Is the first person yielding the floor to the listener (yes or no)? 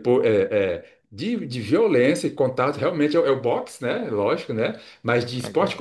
no